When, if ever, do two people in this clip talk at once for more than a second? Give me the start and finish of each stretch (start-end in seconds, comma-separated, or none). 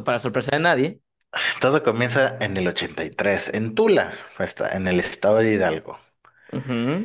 none